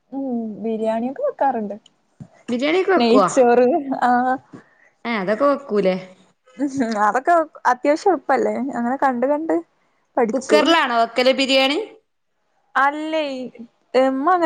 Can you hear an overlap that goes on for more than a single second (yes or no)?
no